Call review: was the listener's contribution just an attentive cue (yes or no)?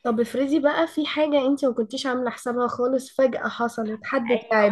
no